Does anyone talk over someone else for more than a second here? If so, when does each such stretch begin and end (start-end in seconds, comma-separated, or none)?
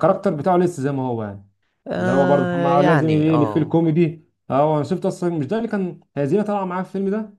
2.0-3.8